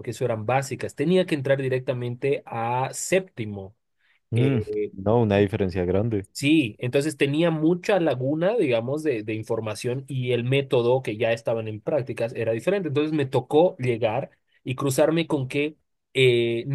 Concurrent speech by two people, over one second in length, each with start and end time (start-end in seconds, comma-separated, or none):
none